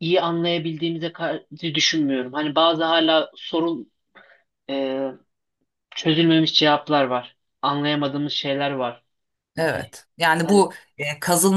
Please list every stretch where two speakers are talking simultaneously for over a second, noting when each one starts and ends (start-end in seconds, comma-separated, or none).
none